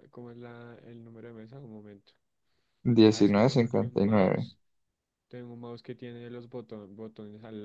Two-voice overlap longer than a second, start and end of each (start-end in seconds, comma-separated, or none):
3.1-4.5